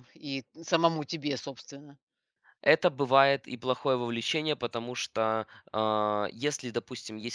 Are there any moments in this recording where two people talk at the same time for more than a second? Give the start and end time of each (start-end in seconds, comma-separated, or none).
none